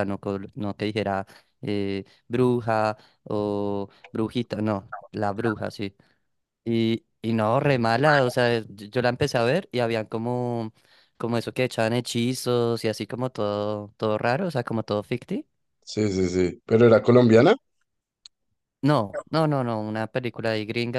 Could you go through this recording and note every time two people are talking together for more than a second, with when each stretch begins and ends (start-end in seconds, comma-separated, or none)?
none